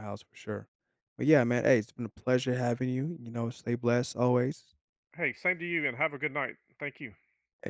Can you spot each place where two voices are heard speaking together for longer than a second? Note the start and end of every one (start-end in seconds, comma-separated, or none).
none